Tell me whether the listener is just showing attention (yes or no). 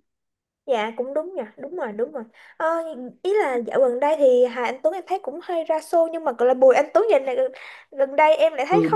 no